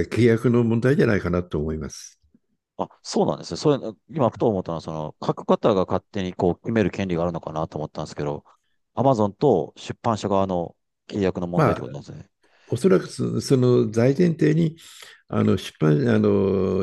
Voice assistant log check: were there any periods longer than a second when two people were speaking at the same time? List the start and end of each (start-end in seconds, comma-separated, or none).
none